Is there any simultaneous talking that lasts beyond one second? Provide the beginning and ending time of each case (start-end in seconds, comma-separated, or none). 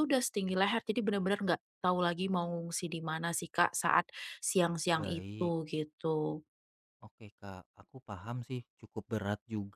none